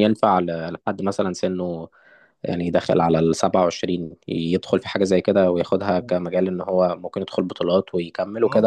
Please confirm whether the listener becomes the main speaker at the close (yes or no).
yes